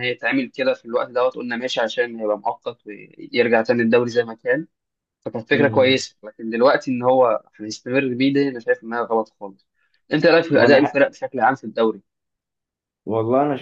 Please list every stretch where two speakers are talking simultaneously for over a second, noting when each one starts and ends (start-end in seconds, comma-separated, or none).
none